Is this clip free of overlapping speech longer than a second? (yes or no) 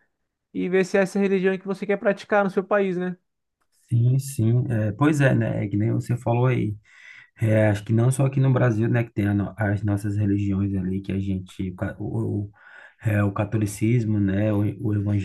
yes